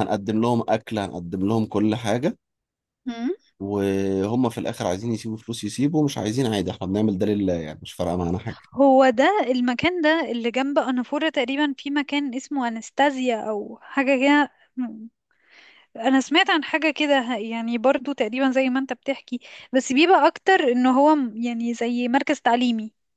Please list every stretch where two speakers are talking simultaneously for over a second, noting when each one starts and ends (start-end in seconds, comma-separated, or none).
none